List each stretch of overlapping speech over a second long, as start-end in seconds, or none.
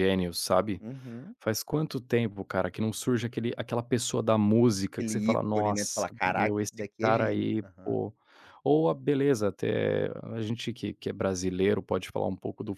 4.9-7.9